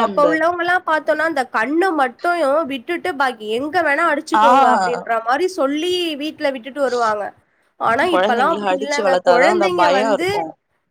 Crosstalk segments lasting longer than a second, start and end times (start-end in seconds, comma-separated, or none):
8.1-10.3